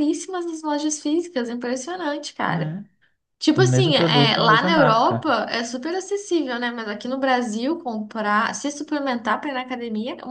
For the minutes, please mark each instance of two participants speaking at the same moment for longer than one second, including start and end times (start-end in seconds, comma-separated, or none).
3.6-5.4